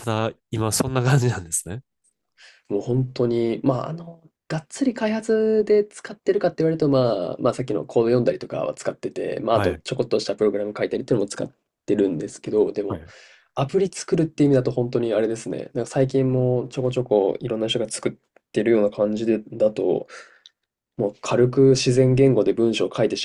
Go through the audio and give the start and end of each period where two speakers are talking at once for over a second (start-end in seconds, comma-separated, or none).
none